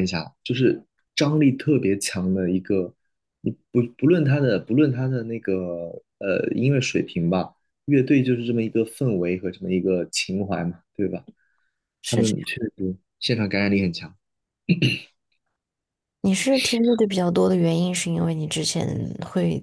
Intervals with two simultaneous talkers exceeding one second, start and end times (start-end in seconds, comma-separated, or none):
none